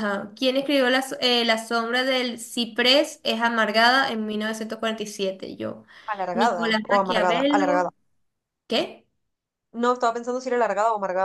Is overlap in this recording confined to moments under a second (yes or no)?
no